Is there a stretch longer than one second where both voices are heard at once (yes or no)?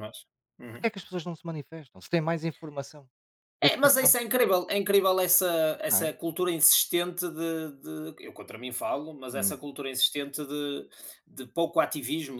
no